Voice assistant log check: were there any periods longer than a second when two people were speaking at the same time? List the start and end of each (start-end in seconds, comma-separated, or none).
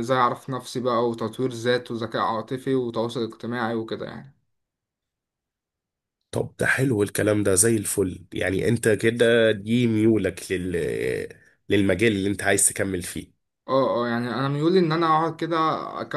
none